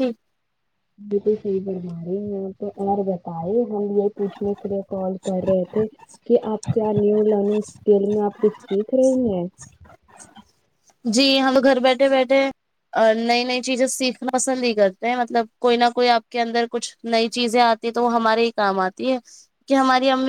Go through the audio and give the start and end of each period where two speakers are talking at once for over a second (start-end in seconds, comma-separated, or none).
none